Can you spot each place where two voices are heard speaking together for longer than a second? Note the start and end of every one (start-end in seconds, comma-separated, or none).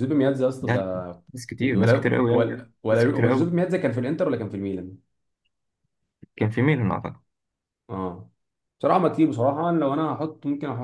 1.6-3.5